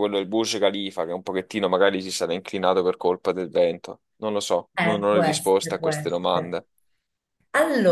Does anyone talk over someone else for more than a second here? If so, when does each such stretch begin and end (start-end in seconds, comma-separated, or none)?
4.8-6.6